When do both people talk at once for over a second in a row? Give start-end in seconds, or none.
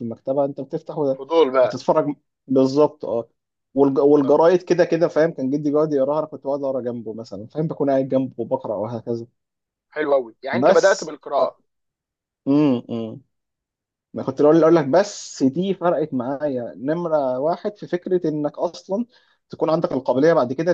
none